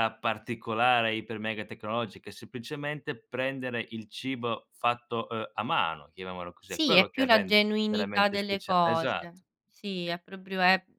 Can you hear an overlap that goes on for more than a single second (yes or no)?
yes